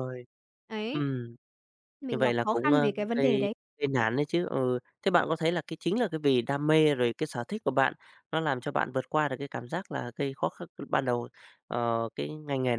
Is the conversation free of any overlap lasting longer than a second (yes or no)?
no